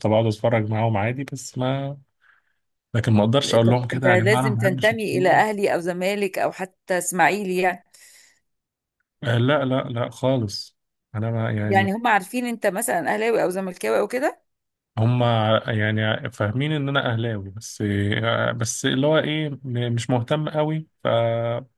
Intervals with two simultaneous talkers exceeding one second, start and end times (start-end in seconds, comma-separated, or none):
3.7-5.4